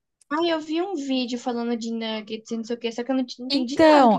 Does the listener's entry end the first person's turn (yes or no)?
yes